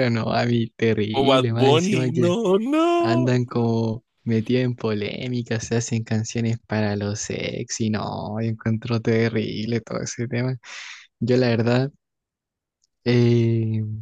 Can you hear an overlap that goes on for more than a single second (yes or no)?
yes